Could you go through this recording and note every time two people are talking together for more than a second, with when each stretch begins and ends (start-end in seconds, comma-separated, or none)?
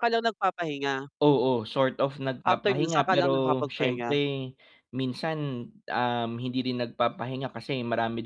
2.4-4.2